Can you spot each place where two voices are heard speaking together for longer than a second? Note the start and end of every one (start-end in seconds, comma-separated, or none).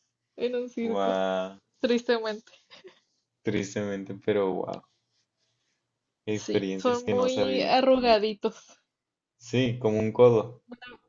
6.4-7.8